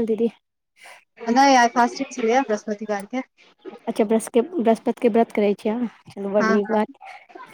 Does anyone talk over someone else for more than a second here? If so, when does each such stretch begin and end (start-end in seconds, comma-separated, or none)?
none